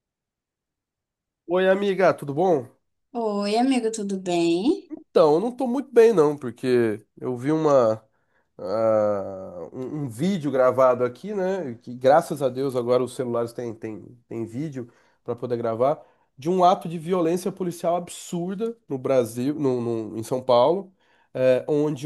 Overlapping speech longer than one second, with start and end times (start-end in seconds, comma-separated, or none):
none